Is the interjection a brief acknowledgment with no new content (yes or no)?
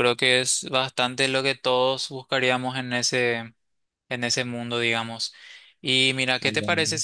yes